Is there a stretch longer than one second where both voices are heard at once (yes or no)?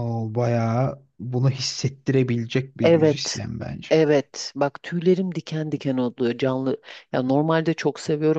no